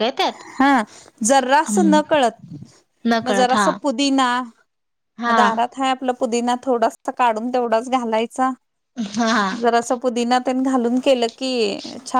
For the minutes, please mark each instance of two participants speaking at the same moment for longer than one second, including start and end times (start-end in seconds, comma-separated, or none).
none